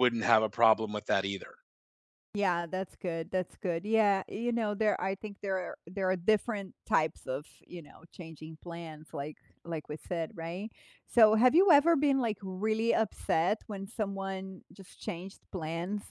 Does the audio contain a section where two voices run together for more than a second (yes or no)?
no